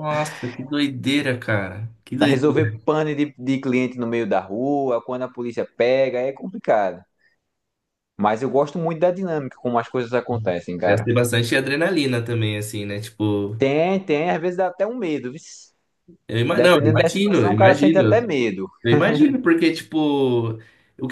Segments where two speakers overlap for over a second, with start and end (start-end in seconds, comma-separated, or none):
16.5-18.2